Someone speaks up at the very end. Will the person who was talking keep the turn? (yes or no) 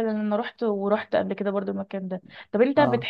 yes